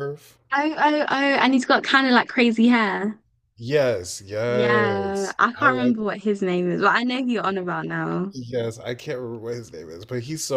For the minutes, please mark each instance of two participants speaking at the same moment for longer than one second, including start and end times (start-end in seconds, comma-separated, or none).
4.5-6.0